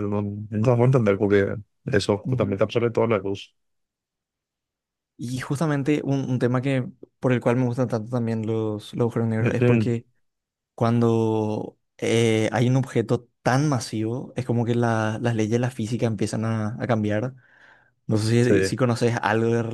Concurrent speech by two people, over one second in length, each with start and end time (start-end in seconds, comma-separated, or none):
none